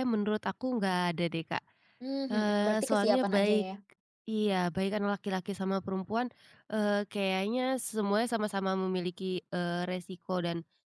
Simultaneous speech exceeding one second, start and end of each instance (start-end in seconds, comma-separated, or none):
2.3-3.7